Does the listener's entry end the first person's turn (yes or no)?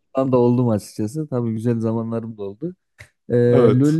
no